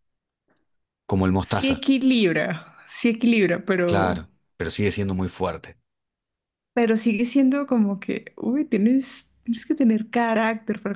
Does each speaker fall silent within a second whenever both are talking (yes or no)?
yes